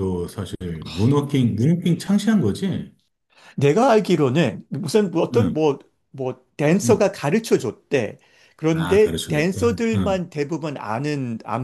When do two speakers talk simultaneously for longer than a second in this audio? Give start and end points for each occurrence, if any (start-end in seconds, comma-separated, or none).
8.7-10.2